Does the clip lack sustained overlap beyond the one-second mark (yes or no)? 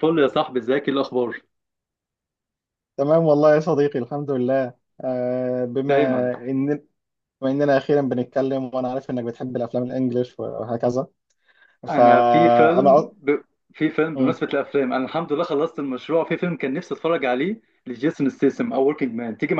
no